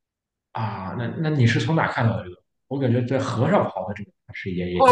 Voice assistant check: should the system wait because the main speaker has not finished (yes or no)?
no